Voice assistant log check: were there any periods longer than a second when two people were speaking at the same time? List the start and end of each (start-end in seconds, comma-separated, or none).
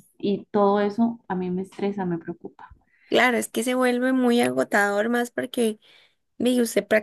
none